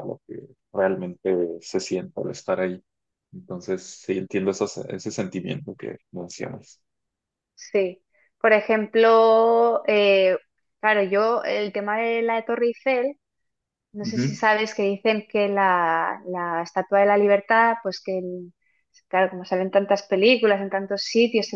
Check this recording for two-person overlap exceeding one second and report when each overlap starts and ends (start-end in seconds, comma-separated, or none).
none